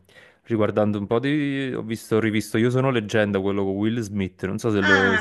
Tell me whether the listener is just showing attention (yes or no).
no